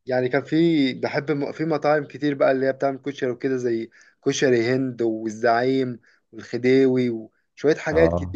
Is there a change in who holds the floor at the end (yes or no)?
no